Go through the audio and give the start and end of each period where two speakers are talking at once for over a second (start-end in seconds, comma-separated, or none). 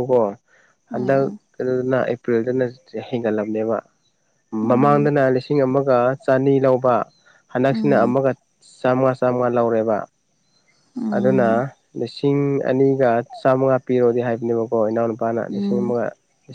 none